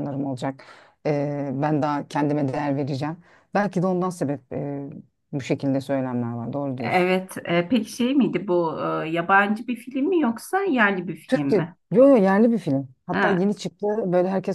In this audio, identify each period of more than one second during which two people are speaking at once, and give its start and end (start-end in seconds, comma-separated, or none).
none